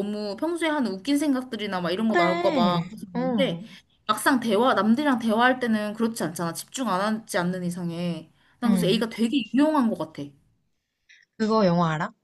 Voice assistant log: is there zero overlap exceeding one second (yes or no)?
no